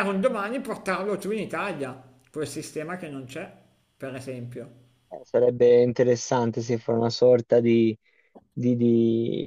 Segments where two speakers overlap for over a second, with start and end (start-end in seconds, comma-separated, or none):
none